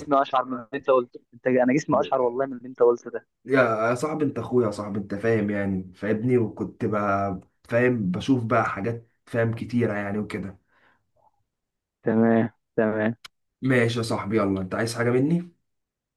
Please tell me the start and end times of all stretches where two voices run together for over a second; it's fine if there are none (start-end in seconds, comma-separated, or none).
none